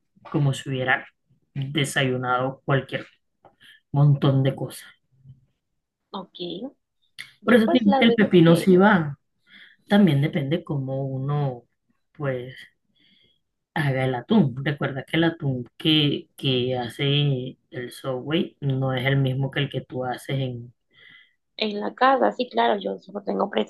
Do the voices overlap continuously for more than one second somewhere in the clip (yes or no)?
yes